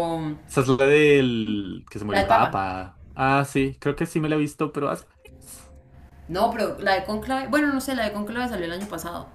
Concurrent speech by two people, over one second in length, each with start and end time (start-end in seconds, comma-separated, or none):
none